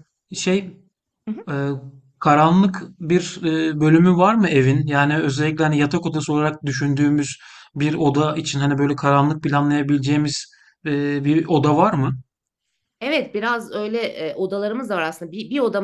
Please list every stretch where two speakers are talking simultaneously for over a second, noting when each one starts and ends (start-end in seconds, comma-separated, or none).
none